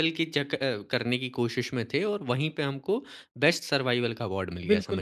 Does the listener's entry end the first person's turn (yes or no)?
yes